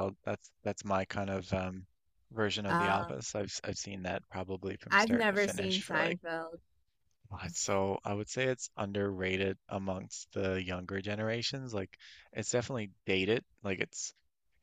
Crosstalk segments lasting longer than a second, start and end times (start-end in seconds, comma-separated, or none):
4.9-6.2